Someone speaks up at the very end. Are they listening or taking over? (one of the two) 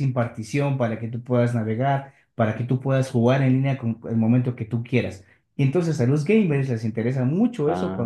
listening